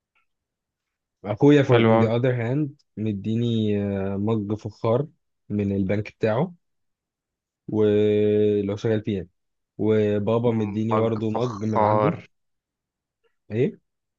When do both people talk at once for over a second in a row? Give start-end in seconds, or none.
10.9-12.1